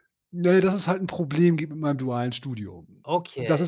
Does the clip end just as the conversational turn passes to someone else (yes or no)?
no